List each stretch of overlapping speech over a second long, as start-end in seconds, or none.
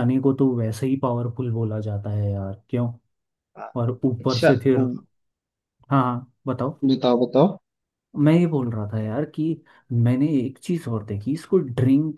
none